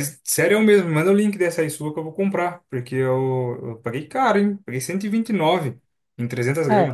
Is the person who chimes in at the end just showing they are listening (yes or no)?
no